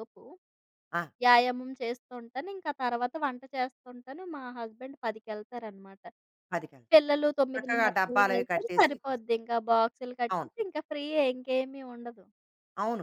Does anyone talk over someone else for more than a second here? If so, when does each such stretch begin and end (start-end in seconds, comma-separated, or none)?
7.5-9.2